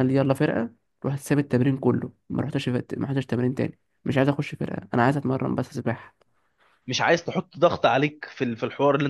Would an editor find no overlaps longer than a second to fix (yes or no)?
yes